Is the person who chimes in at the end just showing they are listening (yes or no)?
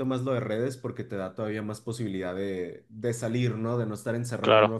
yes